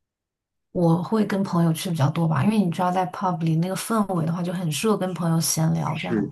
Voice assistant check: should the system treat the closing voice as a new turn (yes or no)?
yes